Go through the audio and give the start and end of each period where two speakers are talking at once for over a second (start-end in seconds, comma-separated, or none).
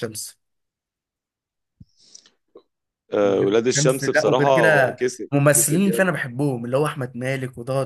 3.2-6.2